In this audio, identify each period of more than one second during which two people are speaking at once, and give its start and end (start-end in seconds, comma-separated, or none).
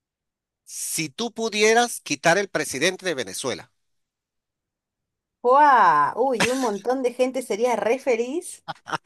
none